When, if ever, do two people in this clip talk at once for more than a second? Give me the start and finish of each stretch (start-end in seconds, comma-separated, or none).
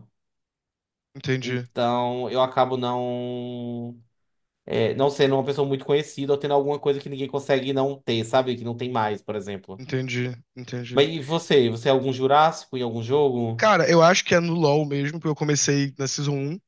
none